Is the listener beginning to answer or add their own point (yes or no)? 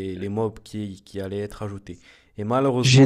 no